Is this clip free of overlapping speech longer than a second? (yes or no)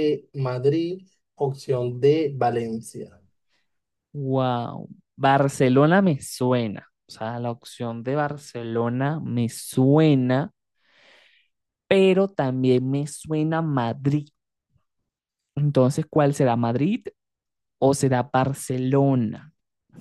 yes